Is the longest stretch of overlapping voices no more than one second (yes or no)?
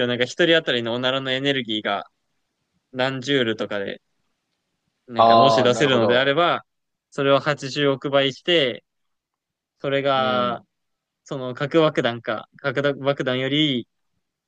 no